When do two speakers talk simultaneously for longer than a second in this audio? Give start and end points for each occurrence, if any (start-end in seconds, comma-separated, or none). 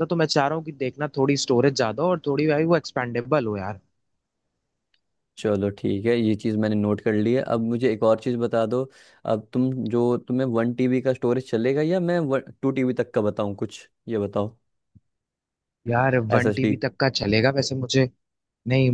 none